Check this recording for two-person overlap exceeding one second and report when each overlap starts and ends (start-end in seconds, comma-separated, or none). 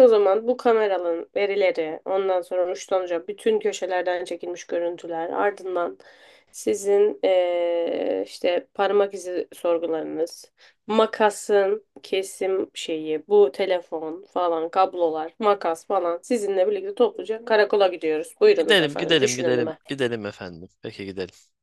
18.6-19.8